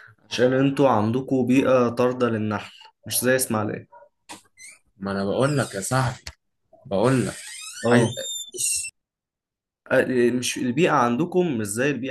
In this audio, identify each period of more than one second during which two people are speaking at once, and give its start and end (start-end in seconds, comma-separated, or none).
none